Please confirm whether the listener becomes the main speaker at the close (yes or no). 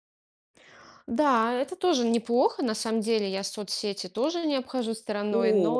yes